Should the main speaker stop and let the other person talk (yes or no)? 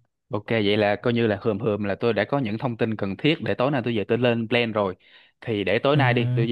no